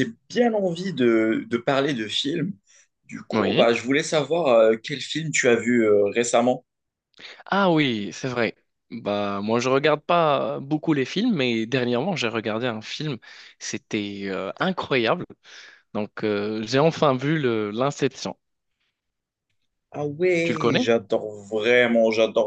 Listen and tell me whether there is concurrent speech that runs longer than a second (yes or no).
no